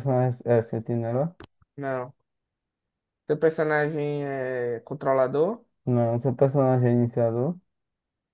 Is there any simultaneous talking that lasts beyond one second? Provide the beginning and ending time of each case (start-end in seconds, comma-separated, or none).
none